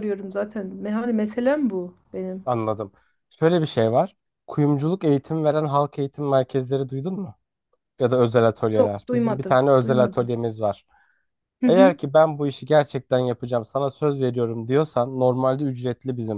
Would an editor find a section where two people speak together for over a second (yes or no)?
yes